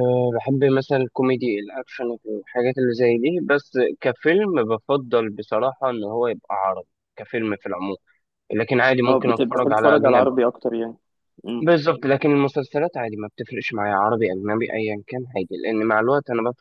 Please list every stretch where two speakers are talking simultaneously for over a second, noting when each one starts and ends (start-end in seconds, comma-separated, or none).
9.1-10.3